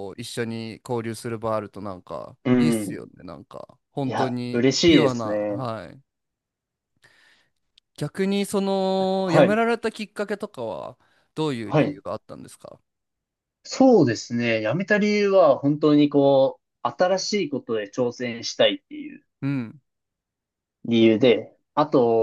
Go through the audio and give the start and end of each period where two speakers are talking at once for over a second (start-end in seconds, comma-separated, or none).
4.0-5.6